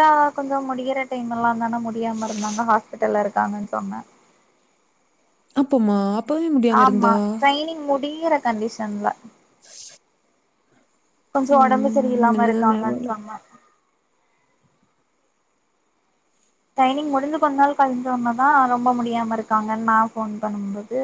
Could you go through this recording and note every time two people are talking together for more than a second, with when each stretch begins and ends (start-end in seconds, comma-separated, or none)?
11.6-13.1